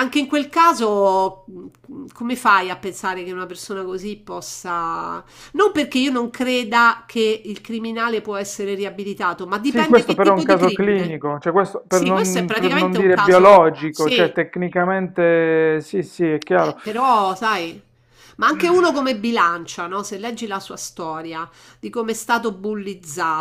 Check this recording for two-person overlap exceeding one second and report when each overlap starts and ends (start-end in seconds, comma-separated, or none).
9.7-11.1, 11.9-14.4